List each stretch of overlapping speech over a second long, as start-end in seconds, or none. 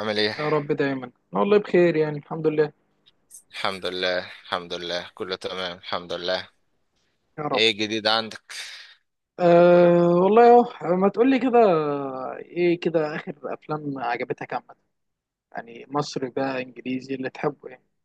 none